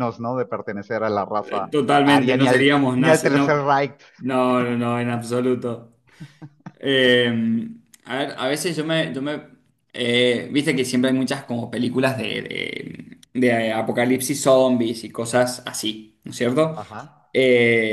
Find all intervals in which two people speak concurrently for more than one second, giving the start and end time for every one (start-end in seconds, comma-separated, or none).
1.7-3.6